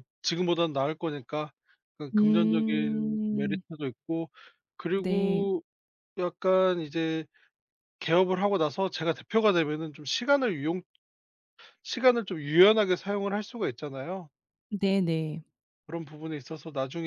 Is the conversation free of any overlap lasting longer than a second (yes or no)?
no